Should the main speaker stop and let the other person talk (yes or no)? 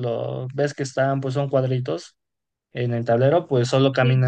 no